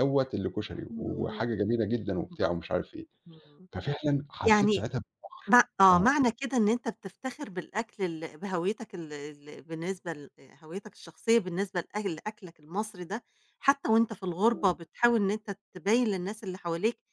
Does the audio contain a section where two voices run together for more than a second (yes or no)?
no